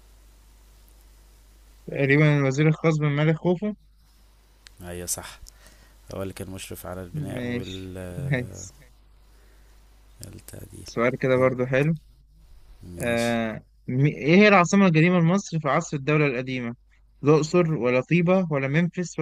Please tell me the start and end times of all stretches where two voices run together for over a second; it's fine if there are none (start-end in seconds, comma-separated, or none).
7.1-8.7